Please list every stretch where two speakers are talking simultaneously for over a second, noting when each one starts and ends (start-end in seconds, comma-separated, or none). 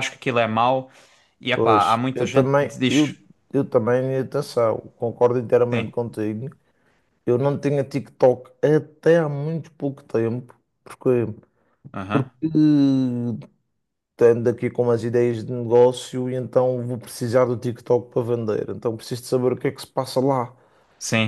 1.5-3.2